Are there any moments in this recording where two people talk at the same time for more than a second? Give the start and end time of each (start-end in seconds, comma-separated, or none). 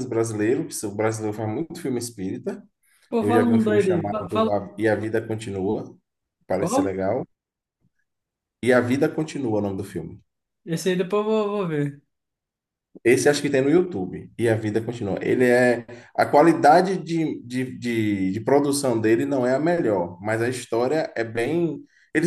3.2-4.6